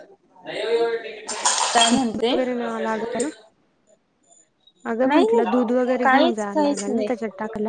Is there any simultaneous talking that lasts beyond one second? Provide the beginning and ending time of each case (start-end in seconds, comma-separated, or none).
5.1-7.1